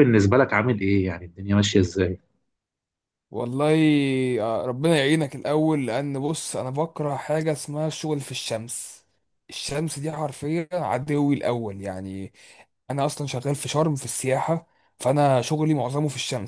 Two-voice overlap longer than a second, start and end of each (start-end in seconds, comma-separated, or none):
none